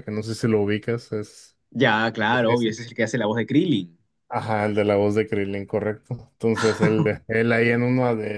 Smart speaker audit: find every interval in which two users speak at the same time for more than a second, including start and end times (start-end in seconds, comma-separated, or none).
none